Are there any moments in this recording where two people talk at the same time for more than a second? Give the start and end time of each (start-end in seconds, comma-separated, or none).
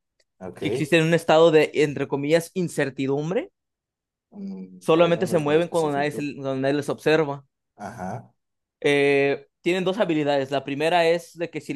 4.8-6.3